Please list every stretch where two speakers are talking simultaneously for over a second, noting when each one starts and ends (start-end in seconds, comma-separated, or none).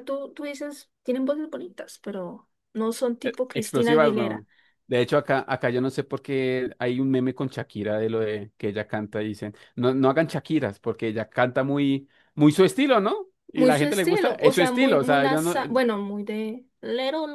3.2-4.5, 13.6-15.6